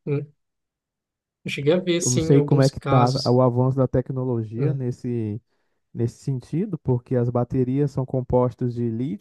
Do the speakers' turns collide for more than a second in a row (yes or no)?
yes